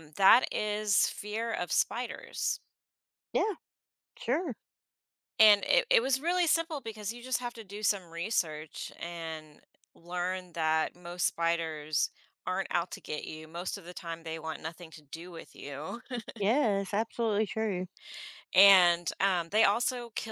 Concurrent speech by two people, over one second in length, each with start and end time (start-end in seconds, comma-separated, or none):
none